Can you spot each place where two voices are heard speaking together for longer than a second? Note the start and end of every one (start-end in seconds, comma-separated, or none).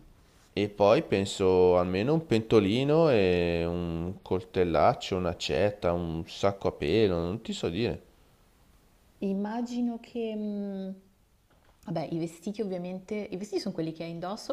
none